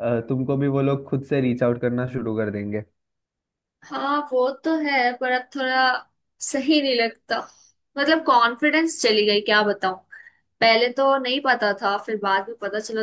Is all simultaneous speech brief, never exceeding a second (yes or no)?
yes